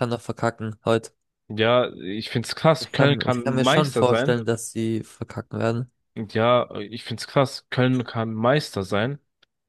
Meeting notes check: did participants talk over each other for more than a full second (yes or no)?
yes